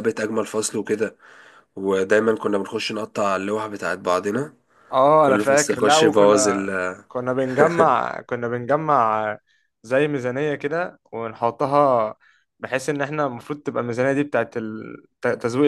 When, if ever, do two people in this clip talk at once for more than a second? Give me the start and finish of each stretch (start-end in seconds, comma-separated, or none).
5.2-6.7